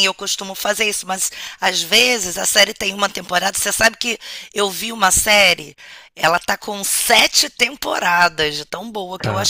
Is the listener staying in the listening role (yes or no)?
yes